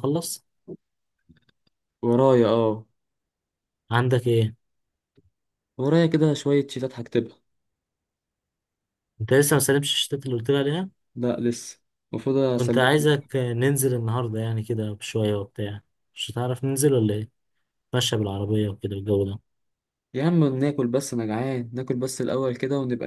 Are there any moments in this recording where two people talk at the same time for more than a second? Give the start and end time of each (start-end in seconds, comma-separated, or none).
none